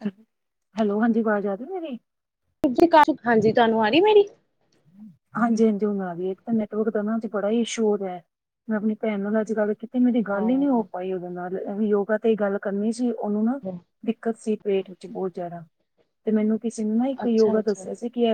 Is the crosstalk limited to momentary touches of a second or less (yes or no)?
yes